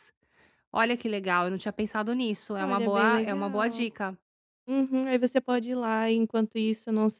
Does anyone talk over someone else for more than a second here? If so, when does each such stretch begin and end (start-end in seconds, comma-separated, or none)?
2.6-3.9